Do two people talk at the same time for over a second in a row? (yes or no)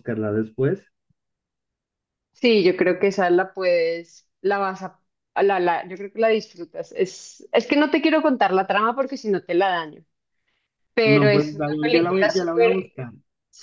yes